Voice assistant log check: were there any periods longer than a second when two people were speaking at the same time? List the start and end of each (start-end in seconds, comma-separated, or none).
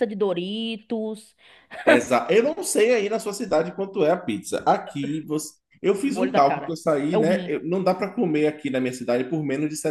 6.0-7.5